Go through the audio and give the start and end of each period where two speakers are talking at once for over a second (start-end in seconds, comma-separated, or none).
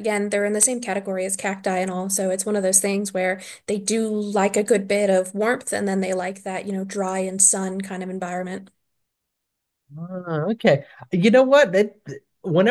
none